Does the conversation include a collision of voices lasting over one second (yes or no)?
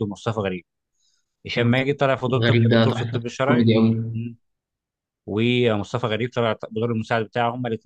yes